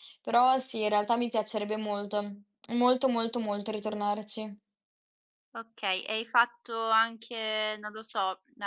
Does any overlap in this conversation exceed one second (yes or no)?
no